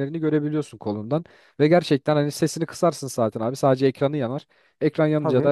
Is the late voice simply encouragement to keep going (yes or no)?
yes